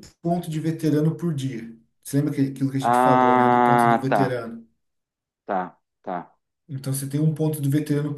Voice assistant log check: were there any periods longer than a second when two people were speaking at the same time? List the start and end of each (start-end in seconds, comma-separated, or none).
2.8-4.4